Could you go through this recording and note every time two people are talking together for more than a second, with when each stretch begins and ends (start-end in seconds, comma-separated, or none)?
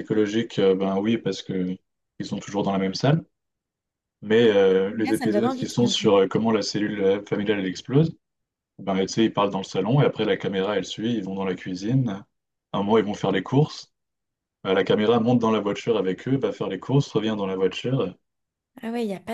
4.9-6.1